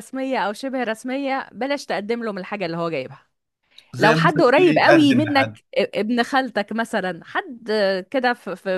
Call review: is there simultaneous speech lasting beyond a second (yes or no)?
yes